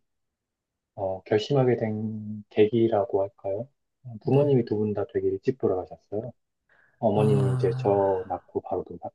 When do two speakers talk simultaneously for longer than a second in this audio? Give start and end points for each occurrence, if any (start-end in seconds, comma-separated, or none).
7.1-8.5